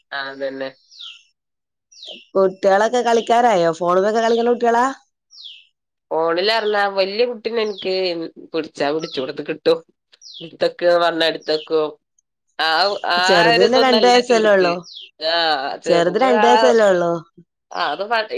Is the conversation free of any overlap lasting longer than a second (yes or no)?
no